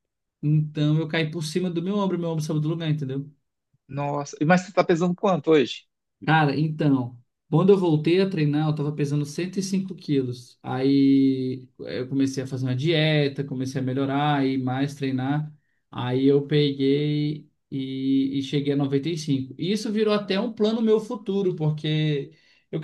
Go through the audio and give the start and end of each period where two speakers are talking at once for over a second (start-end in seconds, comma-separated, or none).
none